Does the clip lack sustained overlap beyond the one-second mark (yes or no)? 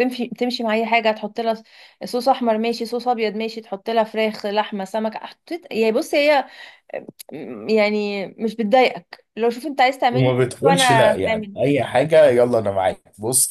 no